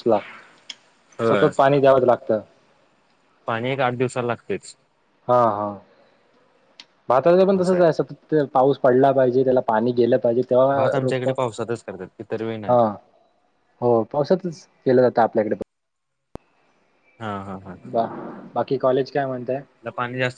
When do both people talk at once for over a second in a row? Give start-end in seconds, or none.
none